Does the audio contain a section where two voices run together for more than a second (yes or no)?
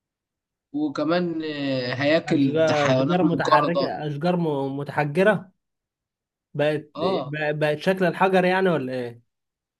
yes